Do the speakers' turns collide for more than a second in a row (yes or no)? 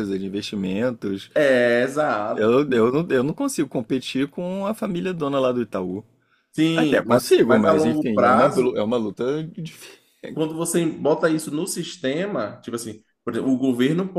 yes